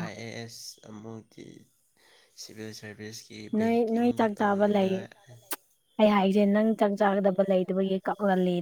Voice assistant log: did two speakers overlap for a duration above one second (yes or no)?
yes